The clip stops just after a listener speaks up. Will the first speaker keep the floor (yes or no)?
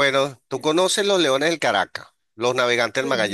yes